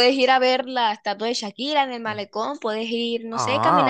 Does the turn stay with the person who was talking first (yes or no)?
yes